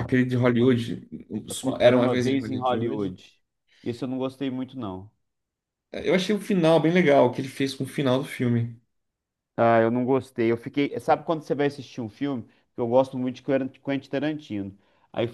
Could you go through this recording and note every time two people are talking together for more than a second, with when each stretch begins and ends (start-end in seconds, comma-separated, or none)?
1.8-3.2